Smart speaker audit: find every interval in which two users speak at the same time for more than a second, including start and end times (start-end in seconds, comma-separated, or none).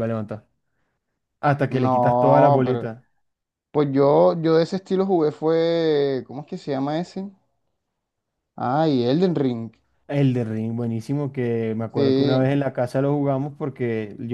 1.7-2.9